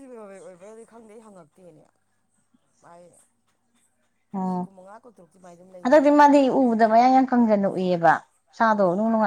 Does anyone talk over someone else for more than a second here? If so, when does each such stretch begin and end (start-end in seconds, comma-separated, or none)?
none